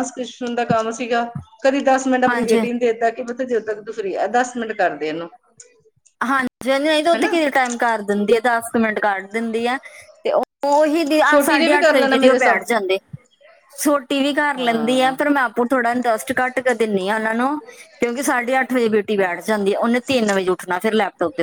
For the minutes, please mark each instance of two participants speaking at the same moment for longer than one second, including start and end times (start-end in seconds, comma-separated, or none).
11.3-12.6